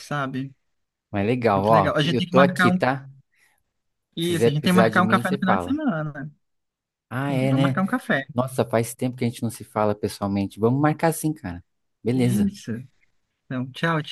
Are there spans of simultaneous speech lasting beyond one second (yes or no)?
yes